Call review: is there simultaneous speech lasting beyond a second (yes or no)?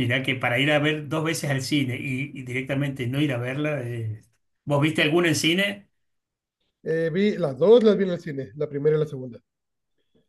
no